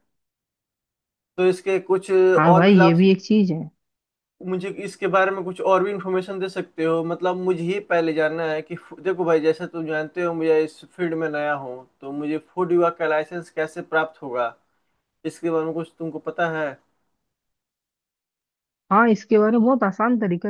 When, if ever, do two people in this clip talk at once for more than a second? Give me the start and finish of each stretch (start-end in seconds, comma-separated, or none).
none